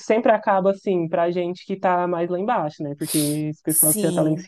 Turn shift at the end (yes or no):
no